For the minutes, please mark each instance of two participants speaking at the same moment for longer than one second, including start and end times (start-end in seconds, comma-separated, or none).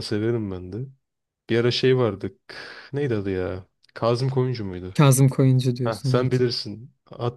none